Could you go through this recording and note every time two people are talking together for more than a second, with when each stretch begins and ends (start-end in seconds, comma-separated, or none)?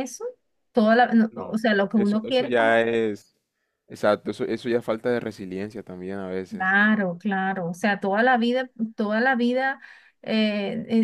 1.3-2.8